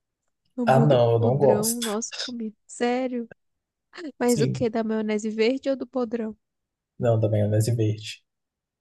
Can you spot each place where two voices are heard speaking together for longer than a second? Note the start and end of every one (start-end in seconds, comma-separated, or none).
0.7-1.9